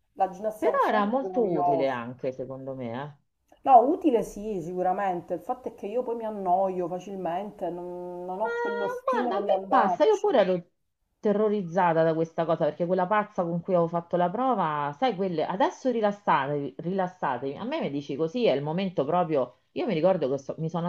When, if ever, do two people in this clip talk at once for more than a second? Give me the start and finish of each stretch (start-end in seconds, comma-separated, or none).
0.6-2.0, 8.4-10.4